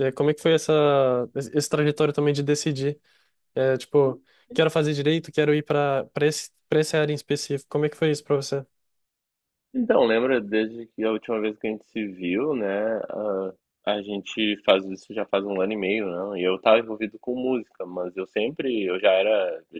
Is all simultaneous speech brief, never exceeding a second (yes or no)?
yes